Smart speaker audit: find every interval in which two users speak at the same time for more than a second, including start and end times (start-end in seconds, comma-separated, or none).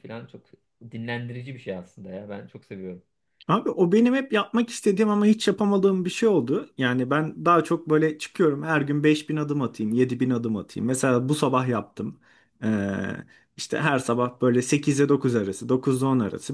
none